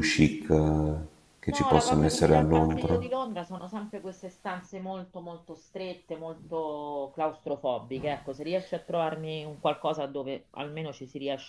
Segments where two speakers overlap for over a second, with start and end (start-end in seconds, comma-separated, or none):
1.5-3.0